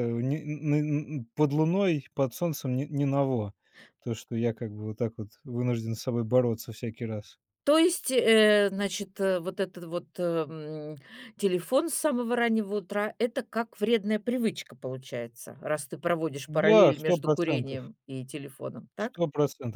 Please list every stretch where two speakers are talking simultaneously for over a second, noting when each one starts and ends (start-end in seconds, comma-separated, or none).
16.5-17.9